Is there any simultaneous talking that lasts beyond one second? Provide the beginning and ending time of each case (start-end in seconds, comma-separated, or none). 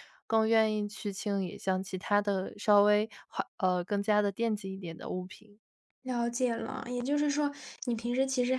none